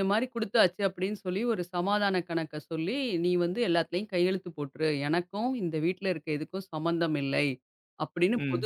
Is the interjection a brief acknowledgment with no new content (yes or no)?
yes